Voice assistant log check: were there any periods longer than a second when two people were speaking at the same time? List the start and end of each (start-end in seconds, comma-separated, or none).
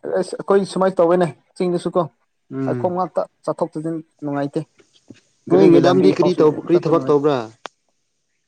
5.5-7.2